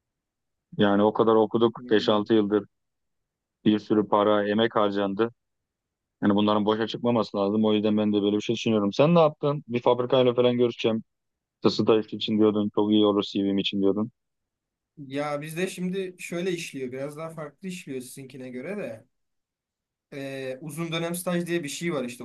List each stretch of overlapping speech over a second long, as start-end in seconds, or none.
none